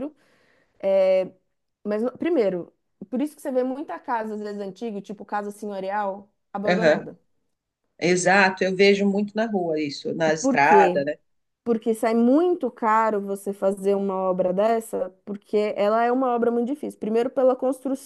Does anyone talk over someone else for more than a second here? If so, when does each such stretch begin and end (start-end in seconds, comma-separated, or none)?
none